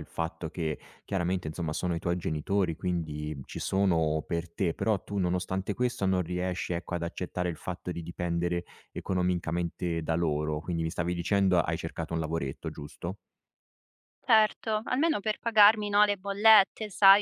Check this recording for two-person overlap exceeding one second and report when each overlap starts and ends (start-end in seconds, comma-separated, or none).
none